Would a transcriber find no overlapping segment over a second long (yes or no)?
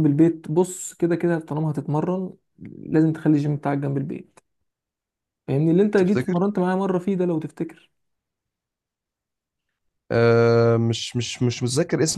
yes